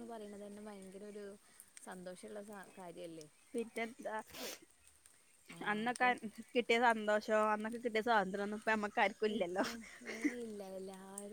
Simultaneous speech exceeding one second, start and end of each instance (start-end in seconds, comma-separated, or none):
none